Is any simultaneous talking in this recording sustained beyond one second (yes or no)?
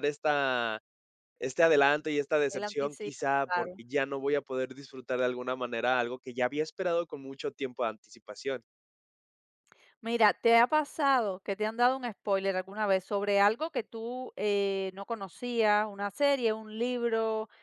yes